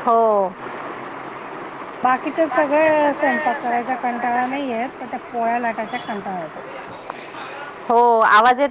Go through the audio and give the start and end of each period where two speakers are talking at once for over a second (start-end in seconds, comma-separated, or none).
2.3-3.7